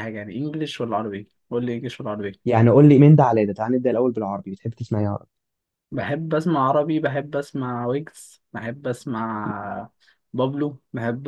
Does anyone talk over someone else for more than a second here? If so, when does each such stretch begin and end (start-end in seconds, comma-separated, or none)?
none